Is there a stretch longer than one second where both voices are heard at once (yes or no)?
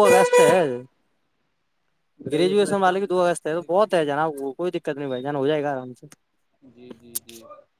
yes